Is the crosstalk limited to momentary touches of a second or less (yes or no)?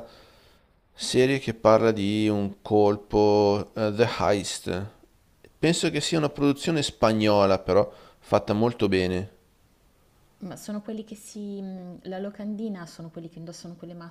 yes